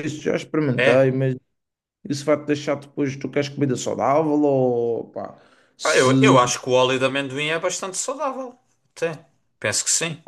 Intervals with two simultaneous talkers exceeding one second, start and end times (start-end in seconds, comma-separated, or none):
none